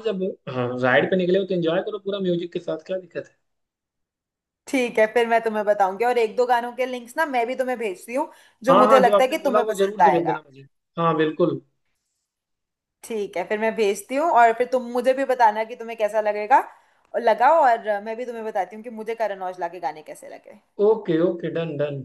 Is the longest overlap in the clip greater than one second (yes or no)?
yes